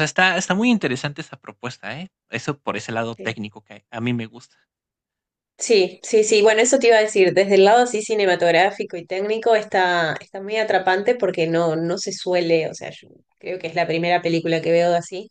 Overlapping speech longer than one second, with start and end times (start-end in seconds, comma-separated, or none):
none